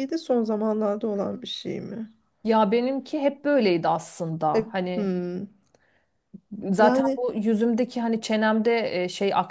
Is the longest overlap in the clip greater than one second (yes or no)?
no